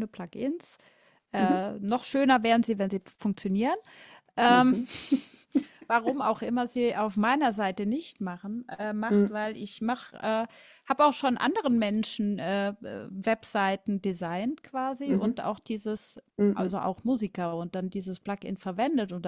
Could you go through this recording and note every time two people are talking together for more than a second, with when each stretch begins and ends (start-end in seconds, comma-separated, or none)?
none